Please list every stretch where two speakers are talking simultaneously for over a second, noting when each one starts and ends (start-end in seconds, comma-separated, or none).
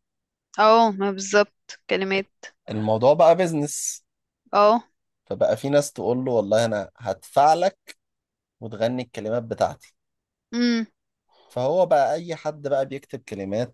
none